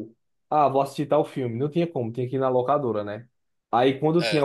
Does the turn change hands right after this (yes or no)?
no